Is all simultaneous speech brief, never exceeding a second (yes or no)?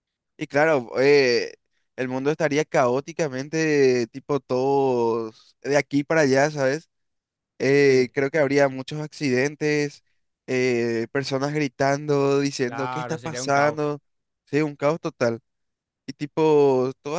no